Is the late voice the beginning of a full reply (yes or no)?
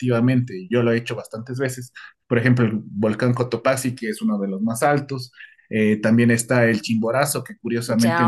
no